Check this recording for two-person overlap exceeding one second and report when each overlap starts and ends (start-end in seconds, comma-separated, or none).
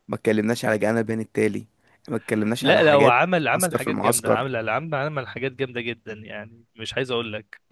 2.6-4.4